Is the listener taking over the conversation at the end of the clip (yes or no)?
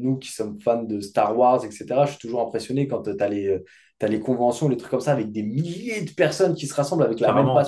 no